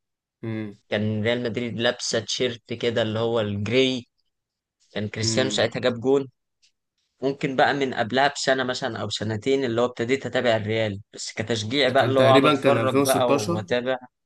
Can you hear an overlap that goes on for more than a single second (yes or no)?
yes